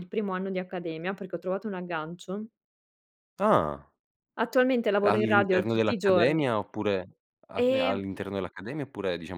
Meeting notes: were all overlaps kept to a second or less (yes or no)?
no